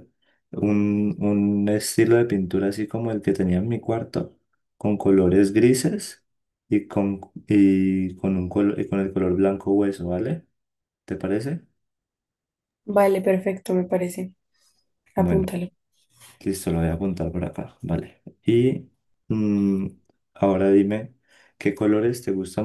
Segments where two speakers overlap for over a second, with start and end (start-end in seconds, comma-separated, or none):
none